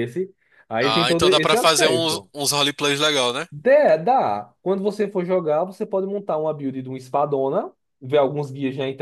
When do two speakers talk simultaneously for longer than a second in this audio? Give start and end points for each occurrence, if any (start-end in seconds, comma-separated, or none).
0.8-2.3